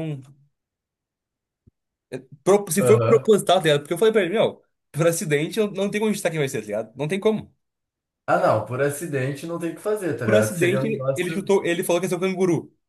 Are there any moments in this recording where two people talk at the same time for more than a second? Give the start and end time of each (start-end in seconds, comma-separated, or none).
10.2-11.5